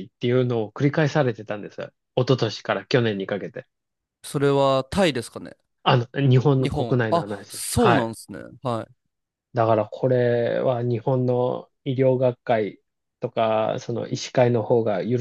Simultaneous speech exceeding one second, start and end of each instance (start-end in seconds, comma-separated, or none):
6.6-8.1